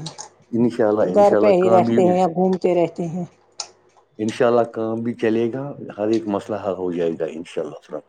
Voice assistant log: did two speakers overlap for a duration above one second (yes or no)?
yes